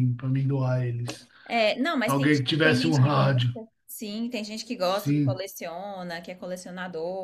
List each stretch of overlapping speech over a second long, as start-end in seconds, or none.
2.0-3.6